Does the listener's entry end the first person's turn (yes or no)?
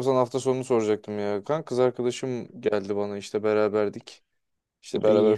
no